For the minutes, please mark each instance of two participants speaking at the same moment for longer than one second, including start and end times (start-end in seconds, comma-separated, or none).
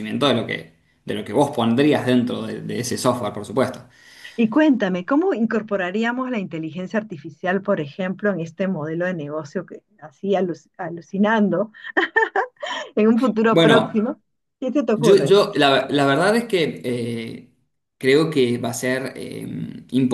none